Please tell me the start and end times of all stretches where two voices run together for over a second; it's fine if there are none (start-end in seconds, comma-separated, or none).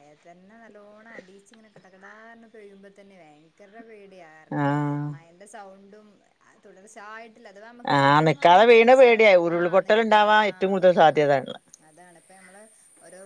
8.0-11.3